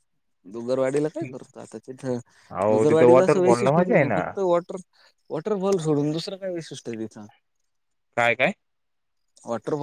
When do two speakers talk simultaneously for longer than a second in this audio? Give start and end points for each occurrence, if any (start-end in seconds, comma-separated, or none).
2.7-4.2